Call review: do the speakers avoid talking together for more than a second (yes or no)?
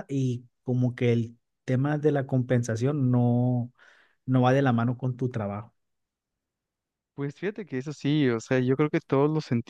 yes